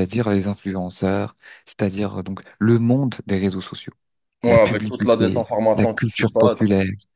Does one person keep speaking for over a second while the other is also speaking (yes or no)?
yes